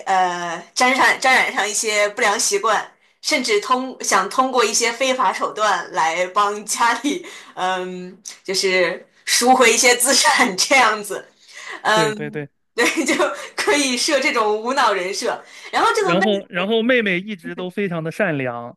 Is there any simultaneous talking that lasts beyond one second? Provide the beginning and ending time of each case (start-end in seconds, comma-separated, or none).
none